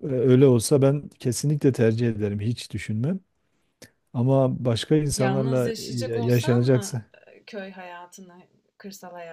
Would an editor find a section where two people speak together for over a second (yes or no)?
yes